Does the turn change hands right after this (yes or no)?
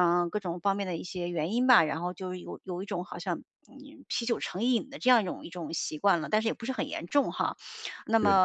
no